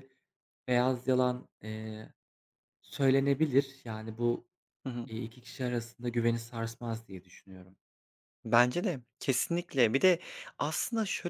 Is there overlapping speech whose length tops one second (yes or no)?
no